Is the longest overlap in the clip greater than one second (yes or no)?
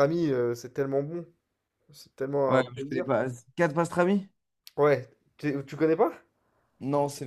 no